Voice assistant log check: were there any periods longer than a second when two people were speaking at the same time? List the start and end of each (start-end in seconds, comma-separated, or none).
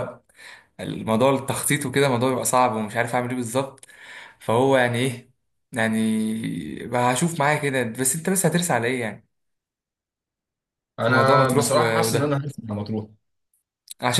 11.0-12.4